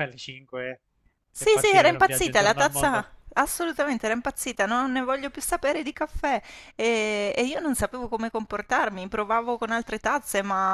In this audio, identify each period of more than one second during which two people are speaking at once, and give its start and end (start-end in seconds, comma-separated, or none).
1.4-3.1